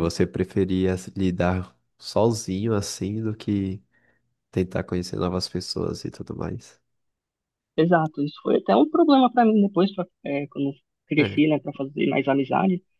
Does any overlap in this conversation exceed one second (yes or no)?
no